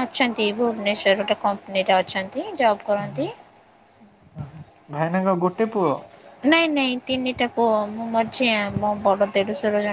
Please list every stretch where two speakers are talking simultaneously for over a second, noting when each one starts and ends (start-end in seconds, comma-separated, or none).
none